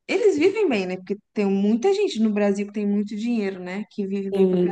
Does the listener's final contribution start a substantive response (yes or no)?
yes